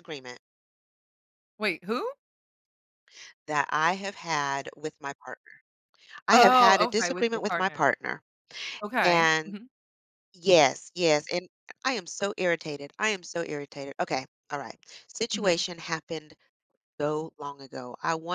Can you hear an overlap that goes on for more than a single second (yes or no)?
yes